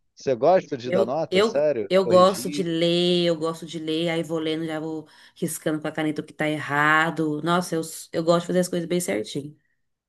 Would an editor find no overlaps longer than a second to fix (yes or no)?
no